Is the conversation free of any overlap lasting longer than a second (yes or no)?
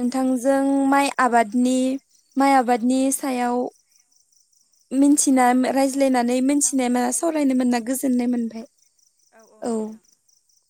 no